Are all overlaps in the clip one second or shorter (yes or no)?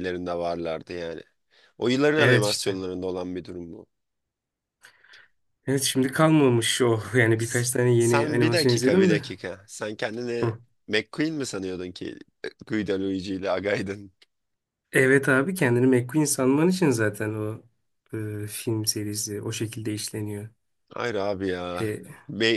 no